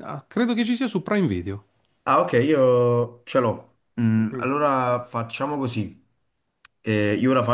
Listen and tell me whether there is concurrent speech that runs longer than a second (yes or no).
no